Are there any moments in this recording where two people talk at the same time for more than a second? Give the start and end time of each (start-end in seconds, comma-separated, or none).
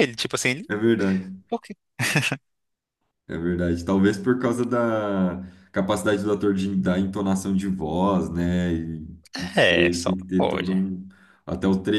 9.5-10.9